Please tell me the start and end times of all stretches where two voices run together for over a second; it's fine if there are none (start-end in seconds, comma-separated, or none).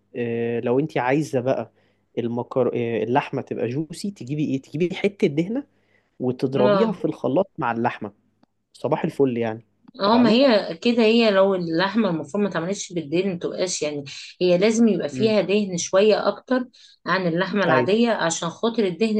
none